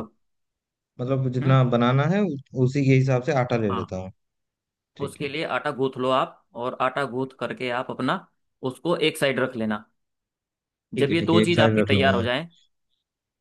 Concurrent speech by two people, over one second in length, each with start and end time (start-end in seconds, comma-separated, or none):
11.0-12.3